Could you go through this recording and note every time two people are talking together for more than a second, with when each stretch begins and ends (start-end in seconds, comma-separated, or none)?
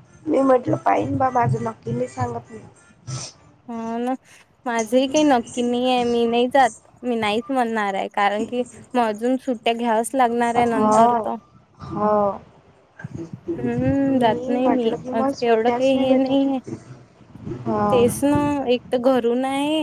13.8-16.6